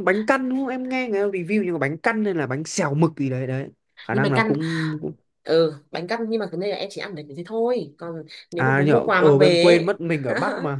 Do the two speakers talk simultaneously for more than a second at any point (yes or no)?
yes